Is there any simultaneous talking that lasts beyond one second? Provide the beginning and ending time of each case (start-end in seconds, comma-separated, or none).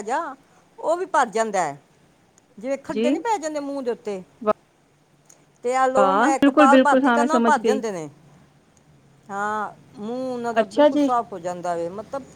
5.8-7.8